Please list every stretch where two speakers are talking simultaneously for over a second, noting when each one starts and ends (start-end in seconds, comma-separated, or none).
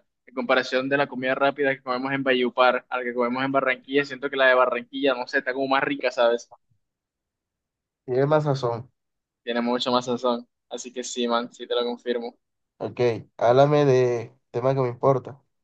none